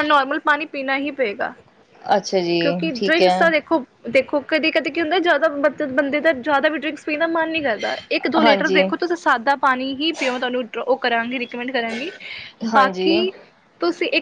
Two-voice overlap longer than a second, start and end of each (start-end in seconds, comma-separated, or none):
none